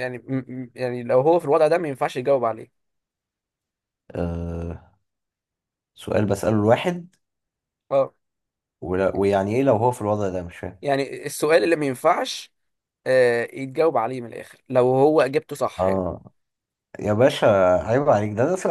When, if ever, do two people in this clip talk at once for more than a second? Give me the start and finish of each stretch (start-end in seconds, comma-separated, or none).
none